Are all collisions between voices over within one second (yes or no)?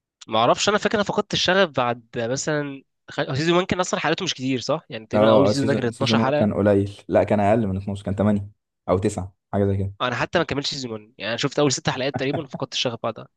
no